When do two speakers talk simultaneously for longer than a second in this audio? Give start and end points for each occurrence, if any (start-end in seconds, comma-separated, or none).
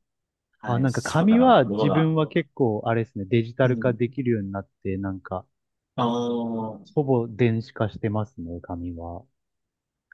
0.7-2.1